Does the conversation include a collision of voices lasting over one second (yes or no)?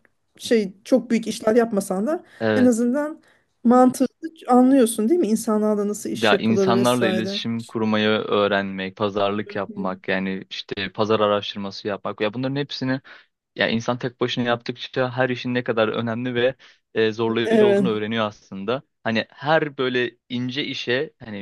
yes